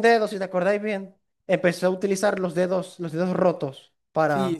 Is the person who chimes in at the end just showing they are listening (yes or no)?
no